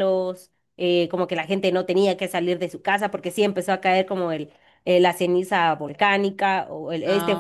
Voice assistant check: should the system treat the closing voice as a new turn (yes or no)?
no